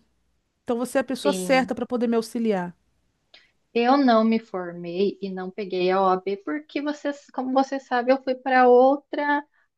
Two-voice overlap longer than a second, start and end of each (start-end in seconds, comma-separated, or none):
none